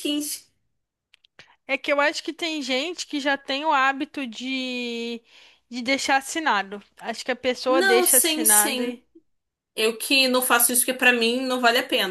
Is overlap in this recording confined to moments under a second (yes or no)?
no